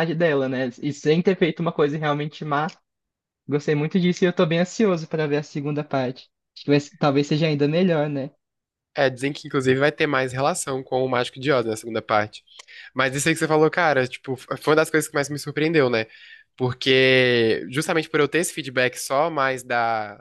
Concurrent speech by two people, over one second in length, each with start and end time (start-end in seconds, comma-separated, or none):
none